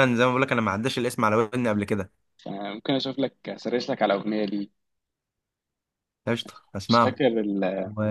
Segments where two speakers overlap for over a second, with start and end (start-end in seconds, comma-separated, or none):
none